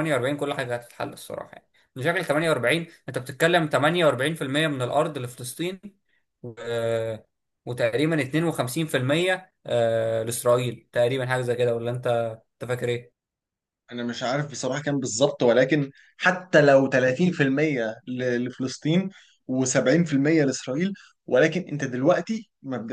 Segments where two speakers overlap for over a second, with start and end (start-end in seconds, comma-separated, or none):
none